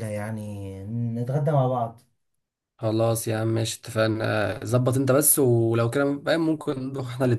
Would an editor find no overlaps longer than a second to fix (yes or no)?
yes